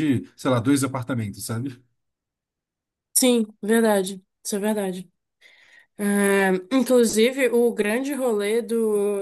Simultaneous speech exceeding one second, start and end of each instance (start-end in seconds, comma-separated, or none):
none